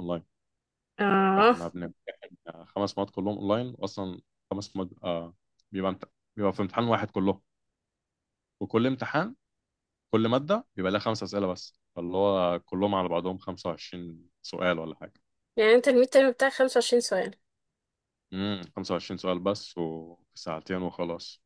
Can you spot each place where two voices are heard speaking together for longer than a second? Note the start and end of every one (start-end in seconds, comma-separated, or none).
none